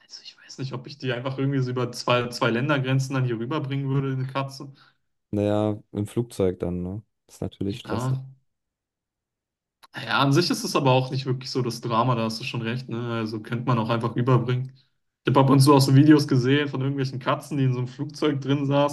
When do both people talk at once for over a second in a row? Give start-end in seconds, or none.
none